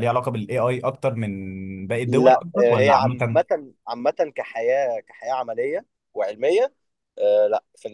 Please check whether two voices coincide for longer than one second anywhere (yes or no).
yes